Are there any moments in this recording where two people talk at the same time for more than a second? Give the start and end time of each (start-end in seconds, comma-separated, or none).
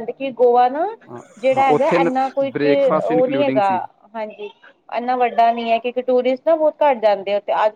none